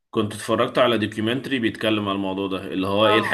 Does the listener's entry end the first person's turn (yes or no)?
no